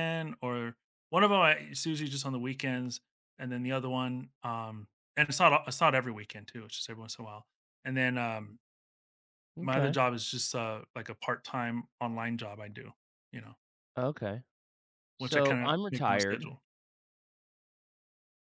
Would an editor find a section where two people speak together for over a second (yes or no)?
yes